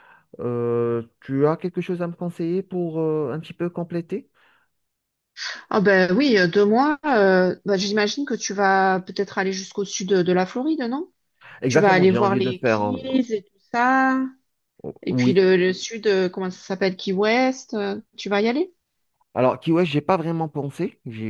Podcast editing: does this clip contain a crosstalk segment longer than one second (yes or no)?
yes